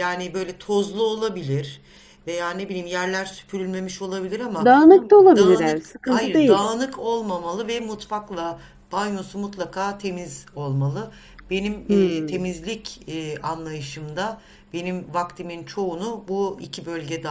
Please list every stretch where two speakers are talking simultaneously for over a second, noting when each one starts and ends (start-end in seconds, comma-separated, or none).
5.3-6.7